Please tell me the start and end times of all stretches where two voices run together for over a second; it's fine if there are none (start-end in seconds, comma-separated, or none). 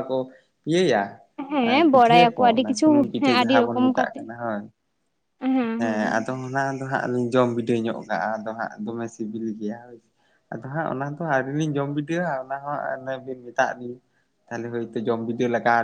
1.7-4.2